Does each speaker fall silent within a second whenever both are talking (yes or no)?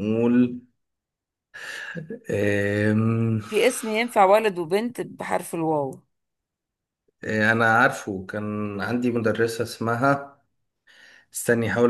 yes